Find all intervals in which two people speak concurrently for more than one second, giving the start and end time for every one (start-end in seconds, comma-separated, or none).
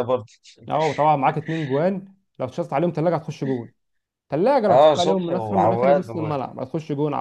4.7-6.3